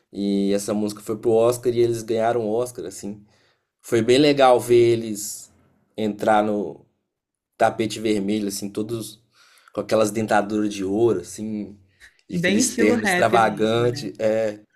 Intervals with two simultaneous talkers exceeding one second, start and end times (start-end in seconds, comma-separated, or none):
12.3-13.9